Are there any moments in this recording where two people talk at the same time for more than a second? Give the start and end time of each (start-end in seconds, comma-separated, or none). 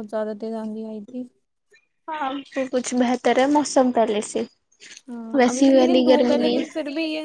5.4-6.6